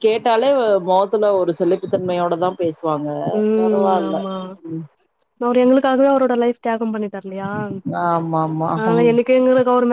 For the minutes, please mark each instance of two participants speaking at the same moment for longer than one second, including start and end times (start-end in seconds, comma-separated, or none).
none